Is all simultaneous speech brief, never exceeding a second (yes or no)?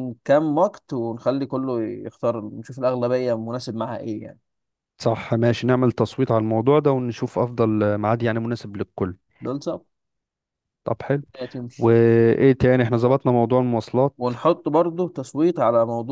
yes